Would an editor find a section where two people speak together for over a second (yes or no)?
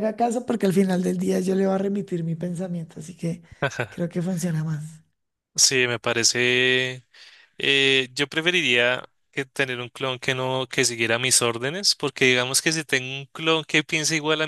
no